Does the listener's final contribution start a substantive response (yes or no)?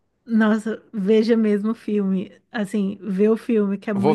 yes